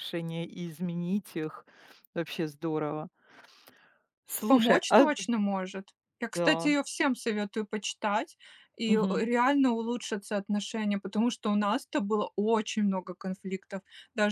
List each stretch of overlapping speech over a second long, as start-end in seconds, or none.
none